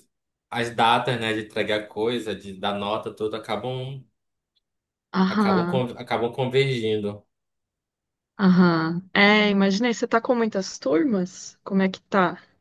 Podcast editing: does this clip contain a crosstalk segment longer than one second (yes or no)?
no